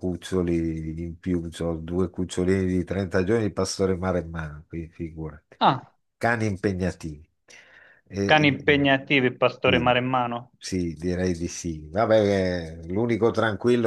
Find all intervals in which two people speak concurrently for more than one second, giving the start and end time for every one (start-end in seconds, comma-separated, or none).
none